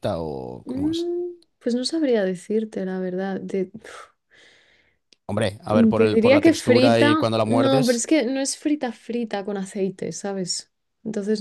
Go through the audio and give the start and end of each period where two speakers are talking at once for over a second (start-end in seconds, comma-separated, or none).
5.7-8.0